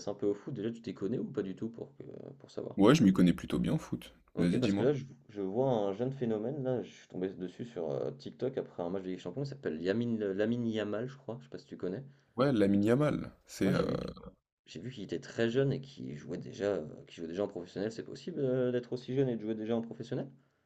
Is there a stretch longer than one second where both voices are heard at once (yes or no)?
no